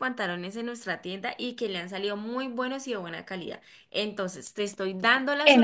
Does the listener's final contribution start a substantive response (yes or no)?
yes